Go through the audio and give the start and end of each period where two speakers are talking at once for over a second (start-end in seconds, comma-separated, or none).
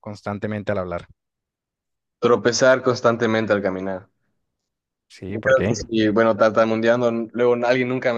none